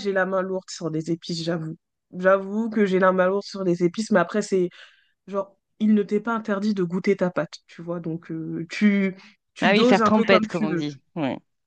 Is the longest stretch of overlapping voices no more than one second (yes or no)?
no